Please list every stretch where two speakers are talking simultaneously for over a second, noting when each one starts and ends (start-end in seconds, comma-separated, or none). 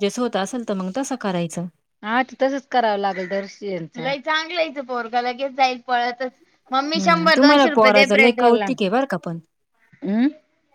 7.0-8.7